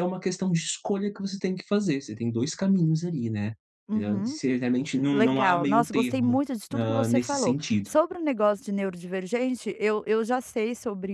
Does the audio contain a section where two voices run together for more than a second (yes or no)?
yes